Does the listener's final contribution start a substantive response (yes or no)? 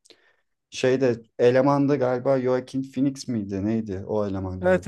yes